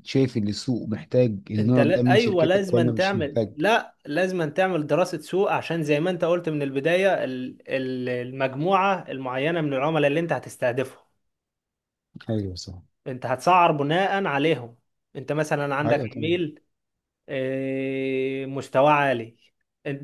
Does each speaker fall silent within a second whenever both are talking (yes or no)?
no